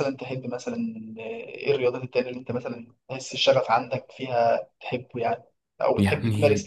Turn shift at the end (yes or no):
no